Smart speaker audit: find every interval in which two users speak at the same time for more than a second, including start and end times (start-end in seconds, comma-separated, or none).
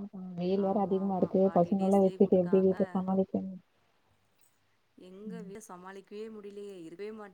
0.7-2.8